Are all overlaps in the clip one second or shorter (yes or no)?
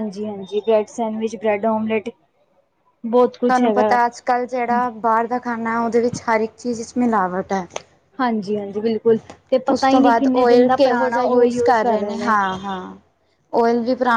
no